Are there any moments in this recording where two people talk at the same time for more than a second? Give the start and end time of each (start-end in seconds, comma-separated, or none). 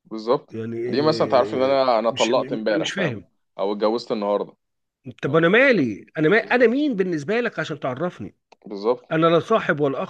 0.5-3.2